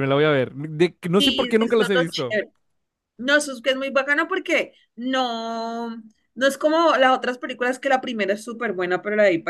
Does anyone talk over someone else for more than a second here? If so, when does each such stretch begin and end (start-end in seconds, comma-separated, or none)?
1.2-2.4